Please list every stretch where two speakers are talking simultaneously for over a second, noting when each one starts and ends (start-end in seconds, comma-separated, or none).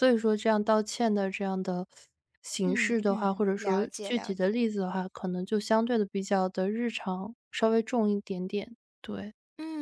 2.6-4.7